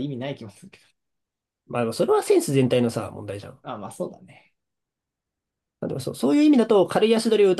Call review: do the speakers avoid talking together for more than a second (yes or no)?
yes